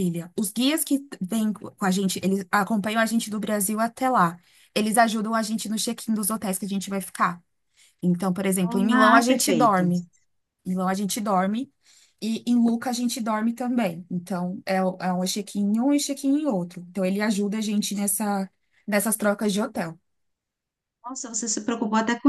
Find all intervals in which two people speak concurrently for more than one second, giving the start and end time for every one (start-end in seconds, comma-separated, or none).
8.6-9.8